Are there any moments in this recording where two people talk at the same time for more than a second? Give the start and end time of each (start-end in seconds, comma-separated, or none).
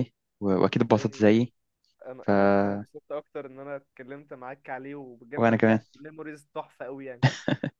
none